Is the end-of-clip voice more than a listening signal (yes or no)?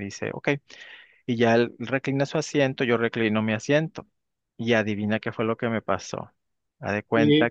yes